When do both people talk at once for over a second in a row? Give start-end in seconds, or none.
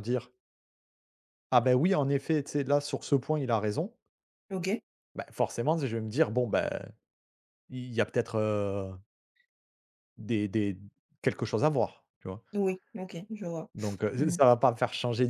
none